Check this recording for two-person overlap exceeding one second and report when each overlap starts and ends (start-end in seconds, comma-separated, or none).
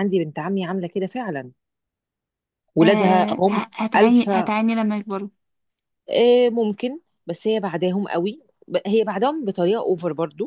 2.8-4.5